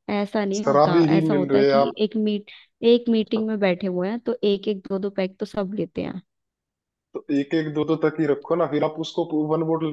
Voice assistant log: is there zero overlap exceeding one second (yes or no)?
no